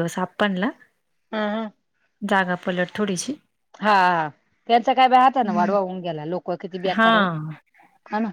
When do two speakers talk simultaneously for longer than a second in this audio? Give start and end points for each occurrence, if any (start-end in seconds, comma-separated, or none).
none